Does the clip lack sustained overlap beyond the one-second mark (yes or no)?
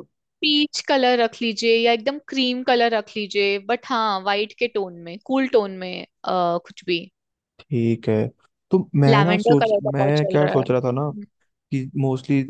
no